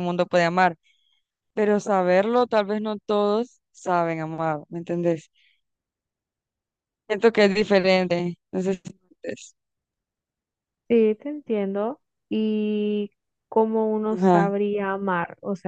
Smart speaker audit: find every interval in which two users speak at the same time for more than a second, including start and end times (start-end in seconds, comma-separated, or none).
none